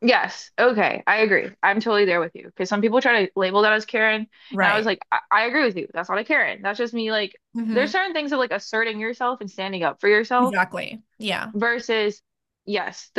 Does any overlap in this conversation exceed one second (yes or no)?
no